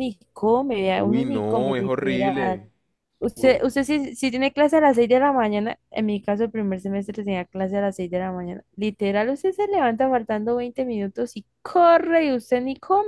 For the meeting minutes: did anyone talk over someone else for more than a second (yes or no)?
yes